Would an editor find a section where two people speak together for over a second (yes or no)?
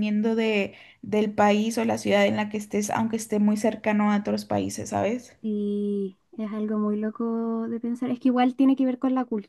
no